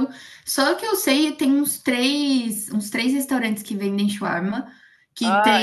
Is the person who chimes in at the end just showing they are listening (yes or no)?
yes